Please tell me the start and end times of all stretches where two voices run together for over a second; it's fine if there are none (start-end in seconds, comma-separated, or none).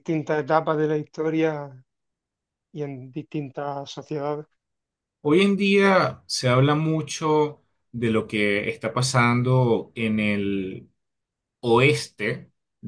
none